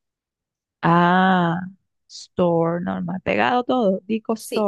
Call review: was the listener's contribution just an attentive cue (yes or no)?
no